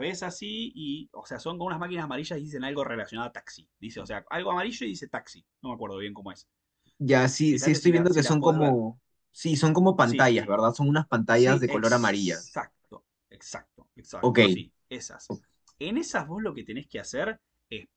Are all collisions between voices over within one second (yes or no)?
no